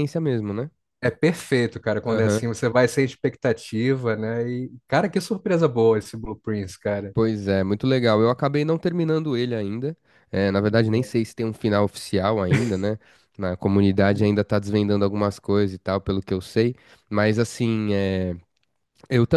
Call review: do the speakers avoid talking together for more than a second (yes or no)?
yes